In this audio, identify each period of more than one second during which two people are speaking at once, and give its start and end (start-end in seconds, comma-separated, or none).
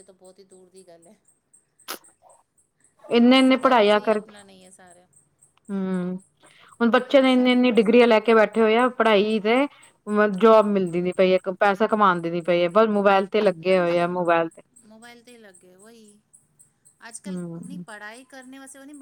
7.1-8.4